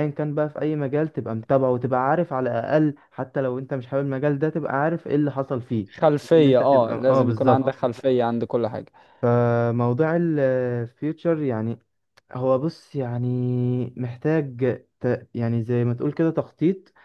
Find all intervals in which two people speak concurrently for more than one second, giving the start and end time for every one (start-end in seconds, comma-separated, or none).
6.3-7.8